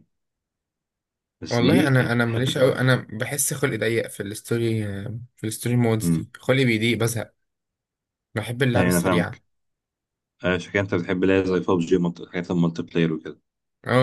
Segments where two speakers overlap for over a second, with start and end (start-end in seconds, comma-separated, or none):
1.5-2.9